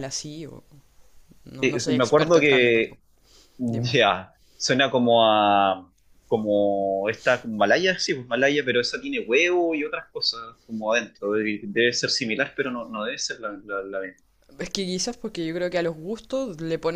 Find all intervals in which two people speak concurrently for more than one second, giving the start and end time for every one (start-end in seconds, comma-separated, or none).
1.6-3.0